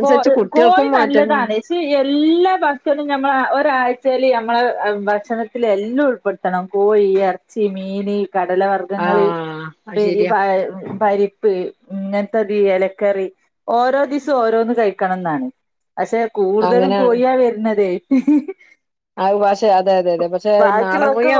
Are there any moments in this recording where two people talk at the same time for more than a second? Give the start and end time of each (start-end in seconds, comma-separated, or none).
none